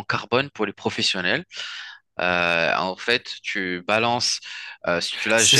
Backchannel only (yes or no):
no